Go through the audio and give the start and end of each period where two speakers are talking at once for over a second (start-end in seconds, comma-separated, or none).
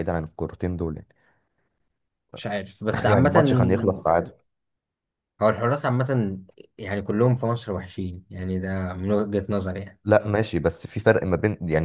none